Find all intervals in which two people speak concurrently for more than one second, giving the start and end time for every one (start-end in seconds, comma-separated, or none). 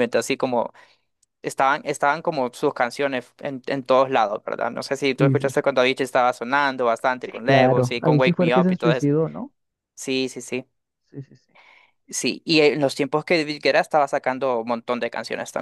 7.2-9.1